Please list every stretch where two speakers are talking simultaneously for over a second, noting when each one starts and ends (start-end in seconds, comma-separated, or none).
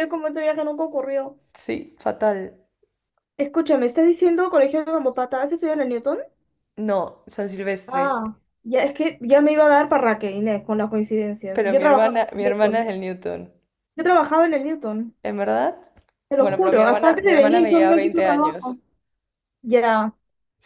11.5-12.9, 16.4-18.8